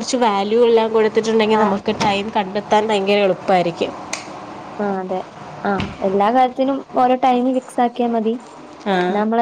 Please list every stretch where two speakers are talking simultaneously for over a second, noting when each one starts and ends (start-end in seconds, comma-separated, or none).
none